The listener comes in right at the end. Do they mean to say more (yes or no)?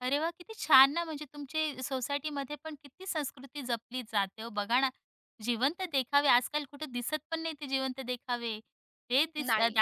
no